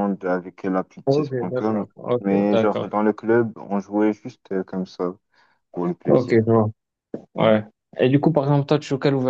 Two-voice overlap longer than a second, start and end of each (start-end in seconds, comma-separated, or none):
1.1-2.9